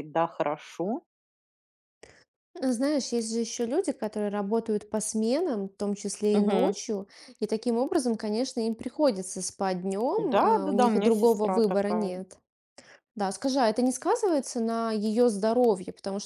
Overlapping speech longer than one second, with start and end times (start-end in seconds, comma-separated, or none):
10.2-12.2